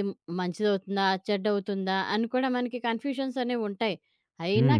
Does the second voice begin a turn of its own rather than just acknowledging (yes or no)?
no